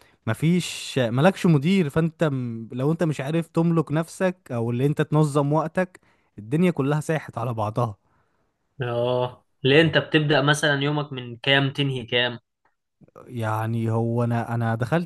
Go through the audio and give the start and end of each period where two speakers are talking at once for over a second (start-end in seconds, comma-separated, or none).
none